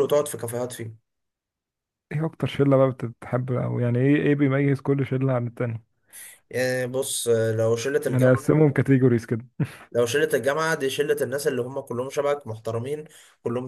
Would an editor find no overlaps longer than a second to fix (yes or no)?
yes